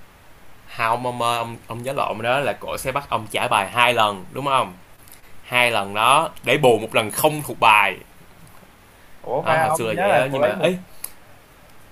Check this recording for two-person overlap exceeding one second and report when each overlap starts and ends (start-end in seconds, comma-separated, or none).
9.4-10.8